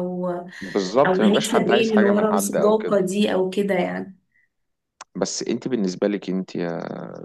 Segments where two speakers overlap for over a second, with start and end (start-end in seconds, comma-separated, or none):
1.1-3.0